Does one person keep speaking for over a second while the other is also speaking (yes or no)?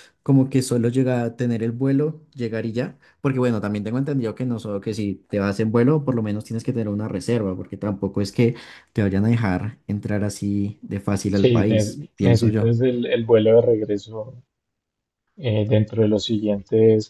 yes